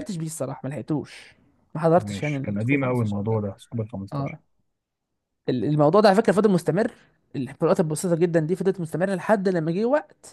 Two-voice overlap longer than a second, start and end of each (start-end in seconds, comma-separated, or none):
2.0-3.4